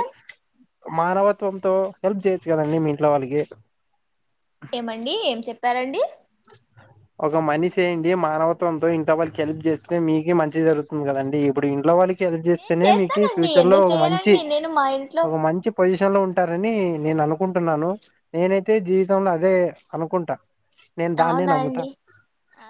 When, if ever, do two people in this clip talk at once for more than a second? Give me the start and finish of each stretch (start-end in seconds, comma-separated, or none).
12.6-14.3